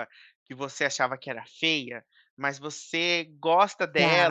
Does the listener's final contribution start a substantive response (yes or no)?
no